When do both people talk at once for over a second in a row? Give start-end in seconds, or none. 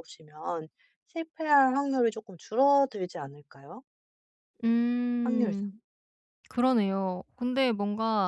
none